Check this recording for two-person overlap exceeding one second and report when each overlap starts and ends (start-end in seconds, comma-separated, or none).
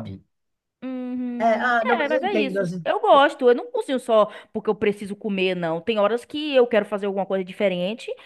1.4-2.9